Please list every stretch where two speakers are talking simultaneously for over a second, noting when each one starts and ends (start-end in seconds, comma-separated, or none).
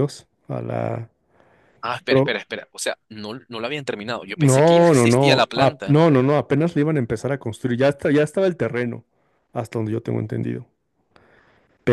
4.3-6.0